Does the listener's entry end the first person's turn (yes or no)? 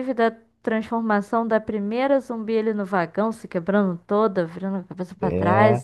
yes